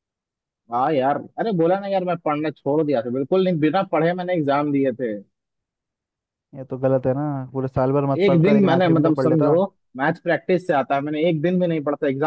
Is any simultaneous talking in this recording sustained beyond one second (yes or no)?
yes